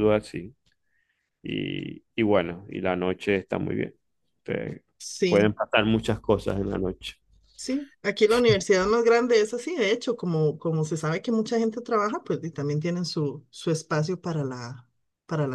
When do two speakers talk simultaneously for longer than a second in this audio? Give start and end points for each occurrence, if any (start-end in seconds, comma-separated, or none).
none